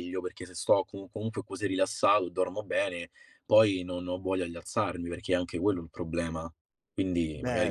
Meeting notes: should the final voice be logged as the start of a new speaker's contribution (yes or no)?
yes